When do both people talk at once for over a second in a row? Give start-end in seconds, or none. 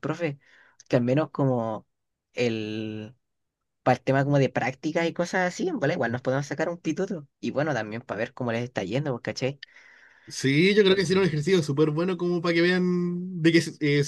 none